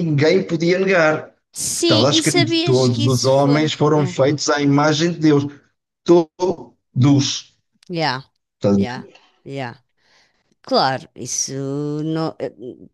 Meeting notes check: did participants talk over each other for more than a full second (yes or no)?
yes